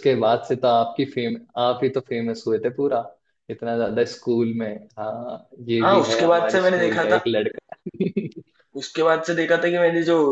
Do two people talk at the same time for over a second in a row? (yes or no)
yes